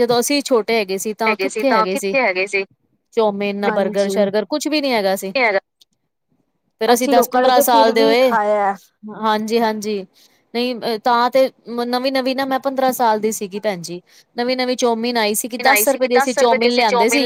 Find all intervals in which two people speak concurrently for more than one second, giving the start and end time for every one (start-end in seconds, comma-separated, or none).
6.9-8.3